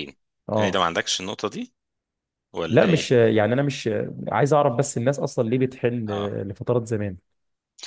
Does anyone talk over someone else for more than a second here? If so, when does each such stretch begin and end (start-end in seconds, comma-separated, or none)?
none